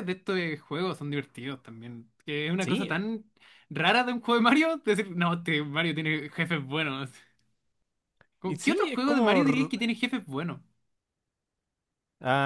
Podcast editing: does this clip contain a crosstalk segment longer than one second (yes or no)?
yes